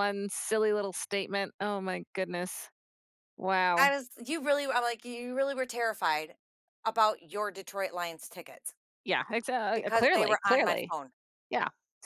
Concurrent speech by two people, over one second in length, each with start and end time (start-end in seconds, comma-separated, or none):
9.7-10.9